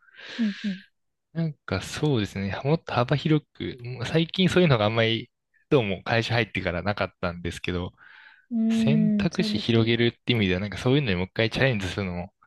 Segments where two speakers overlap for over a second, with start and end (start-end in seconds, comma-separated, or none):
8.7-9.9